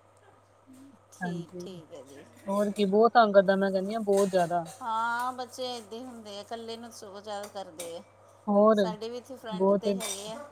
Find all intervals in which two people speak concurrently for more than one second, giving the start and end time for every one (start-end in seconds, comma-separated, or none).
none